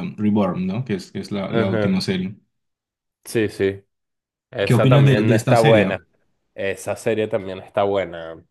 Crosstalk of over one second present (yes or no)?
yes